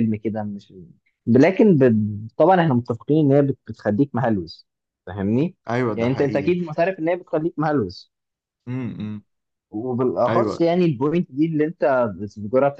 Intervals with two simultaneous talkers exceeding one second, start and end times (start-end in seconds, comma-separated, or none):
none